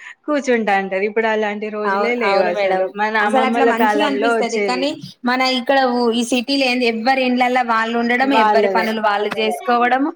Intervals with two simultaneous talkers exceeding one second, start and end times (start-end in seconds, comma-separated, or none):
3.3-4.8